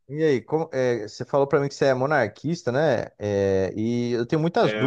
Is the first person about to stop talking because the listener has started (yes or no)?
no